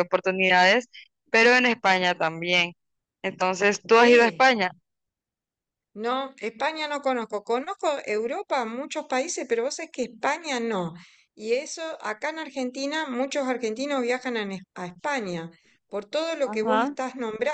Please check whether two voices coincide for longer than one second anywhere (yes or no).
no